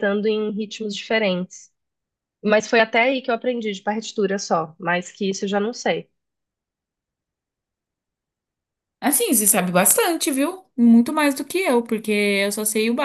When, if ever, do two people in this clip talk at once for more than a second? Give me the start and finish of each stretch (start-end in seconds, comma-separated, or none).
none